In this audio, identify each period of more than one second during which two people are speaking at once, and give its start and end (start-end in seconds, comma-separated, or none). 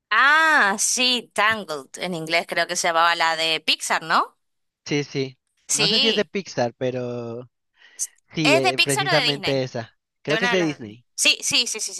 8.4-9.6